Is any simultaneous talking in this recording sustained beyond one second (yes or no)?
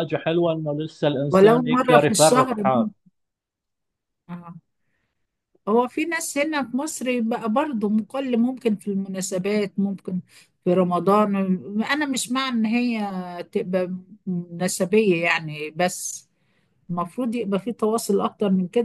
yes